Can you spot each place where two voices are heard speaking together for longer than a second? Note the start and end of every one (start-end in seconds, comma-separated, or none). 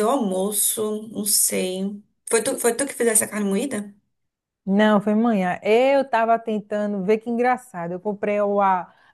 none